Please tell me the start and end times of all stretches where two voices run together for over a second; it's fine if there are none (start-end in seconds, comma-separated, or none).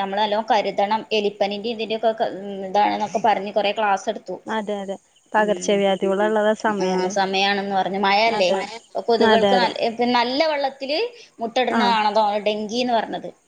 none